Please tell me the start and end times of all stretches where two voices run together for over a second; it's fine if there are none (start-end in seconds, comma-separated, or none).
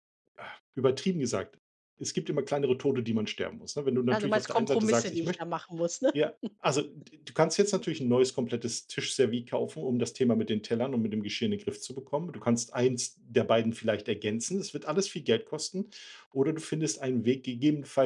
4.1-5.4